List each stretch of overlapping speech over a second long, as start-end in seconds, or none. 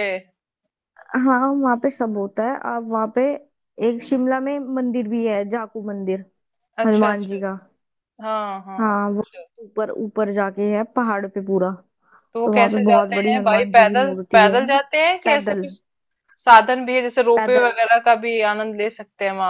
12.4-14.6